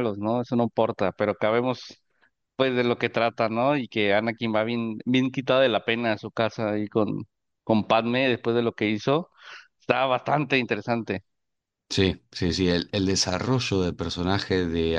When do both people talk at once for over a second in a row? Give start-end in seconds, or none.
none